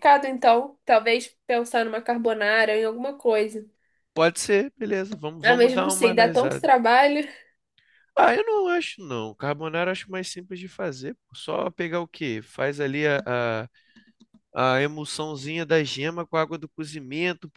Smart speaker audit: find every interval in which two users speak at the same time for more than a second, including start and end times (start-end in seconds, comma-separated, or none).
5.4-6.7